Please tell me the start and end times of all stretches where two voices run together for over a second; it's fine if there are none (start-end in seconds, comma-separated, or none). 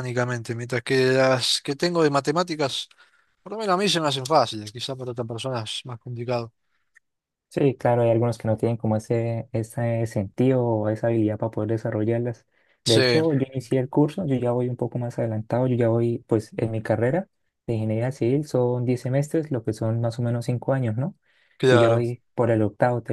none